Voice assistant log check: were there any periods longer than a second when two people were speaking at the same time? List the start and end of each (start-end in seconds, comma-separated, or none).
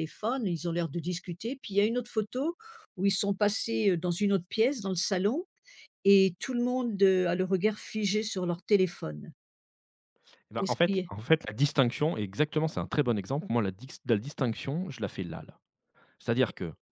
none